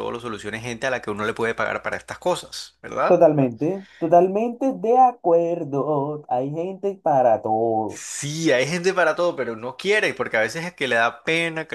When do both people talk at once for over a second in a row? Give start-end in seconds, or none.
none